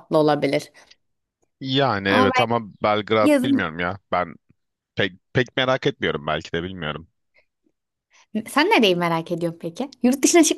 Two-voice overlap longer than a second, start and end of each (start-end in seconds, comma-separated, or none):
none